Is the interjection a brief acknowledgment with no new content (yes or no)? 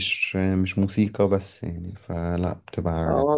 no